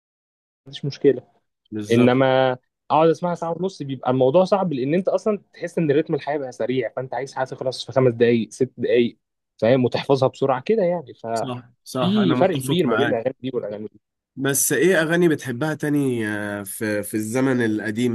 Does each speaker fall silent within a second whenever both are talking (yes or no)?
no